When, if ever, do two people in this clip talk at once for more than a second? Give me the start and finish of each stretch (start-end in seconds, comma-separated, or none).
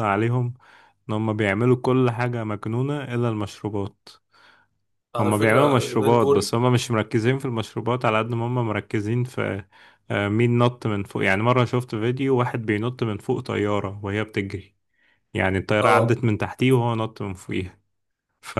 5.2-6.6